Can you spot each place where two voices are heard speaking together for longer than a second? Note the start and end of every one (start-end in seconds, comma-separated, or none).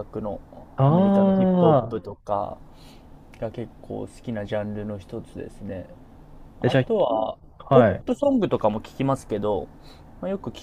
0.9-2.1